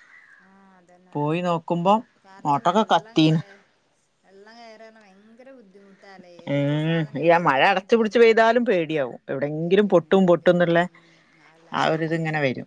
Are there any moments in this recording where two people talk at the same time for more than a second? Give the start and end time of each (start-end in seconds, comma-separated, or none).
none